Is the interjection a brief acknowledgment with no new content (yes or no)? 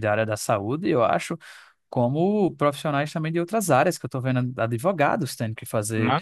no